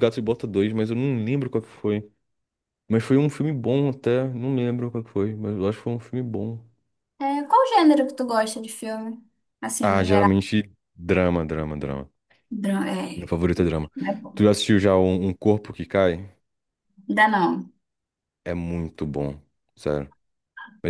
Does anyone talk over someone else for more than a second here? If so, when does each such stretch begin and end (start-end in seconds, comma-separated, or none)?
none